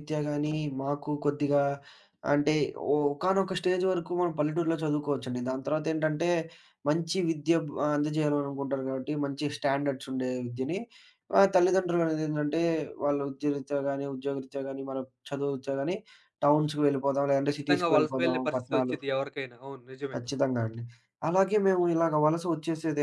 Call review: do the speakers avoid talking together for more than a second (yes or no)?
no